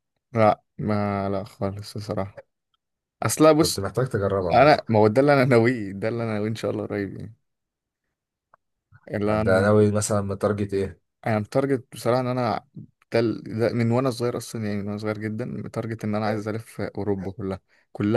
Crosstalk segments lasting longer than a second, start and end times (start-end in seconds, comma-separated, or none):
none